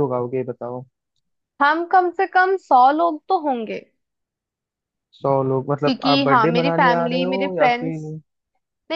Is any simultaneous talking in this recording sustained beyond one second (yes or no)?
yes